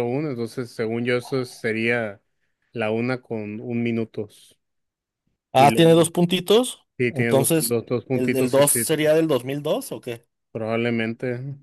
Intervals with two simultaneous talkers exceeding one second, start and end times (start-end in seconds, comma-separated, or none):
7.0-8.8